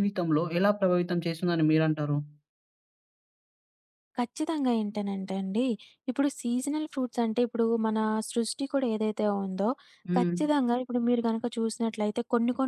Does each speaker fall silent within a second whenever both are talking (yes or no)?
yes